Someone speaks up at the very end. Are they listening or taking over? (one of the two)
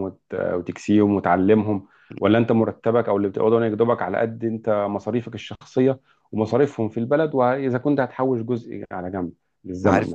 taking over